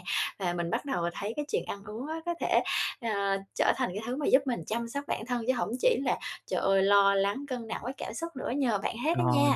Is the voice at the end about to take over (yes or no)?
yes